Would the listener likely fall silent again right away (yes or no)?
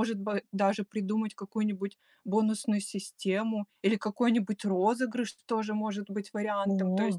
yes